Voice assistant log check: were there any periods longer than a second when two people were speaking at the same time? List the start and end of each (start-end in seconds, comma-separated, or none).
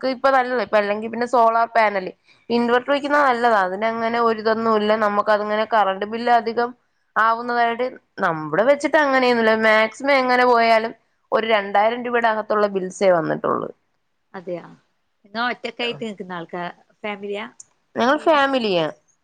none